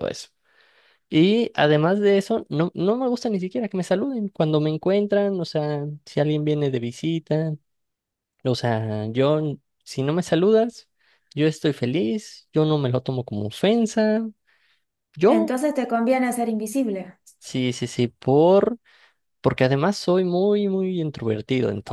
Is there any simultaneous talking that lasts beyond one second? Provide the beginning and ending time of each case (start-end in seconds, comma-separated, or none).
none